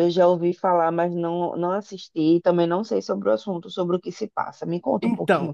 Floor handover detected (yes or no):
yes